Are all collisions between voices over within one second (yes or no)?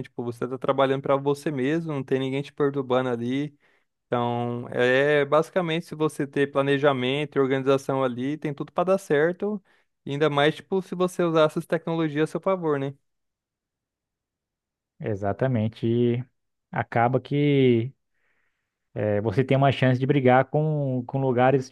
yes